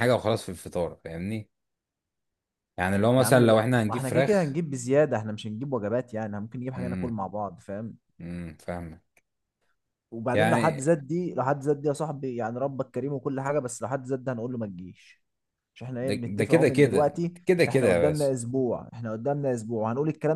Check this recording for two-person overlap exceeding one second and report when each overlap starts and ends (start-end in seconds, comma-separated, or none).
3.2-4.6, 16.0-18.3